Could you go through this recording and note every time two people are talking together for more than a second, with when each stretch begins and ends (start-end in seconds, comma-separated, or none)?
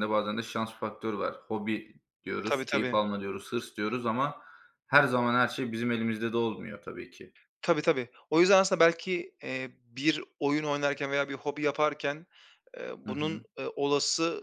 none